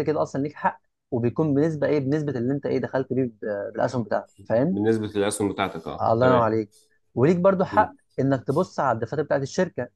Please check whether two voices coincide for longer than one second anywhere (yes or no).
no